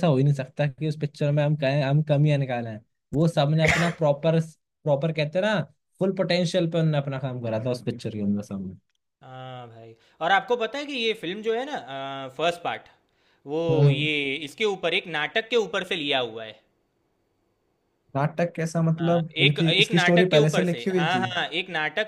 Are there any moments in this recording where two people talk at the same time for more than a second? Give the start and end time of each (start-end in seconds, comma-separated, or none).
19.0-21.2